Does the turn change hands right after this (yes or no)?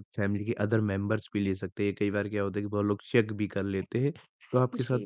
no